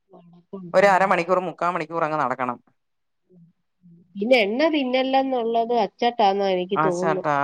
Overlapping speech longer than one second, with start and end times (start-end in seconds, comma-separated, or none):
none